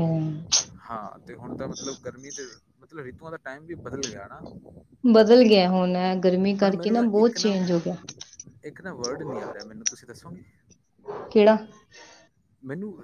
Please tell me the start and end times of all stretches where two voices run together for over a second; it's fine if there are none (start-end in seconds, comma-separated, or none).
none